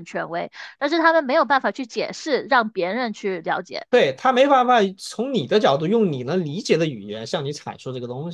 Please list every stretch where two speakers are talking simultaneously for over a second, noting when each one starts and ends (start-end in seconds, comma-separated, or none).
none